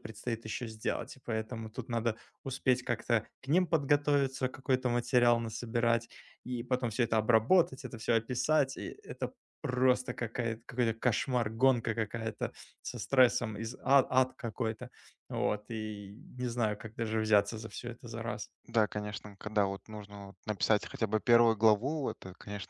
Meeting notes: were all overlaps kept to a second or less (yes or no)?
yes